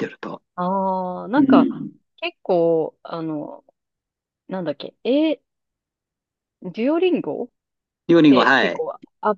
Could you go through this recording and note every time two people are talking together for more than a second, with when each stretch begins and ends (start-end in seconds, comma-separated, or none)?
none